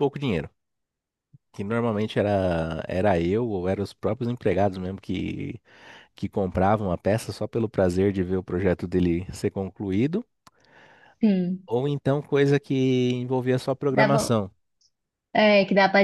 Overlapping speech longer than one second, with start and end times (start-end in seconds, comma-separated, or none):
none